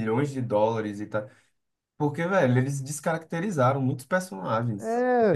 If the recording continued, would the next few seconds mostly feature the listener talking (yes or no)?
yes